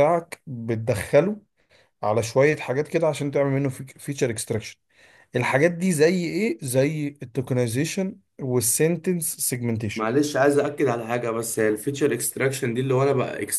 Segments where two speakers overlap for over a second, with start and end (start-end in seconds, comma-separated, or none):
none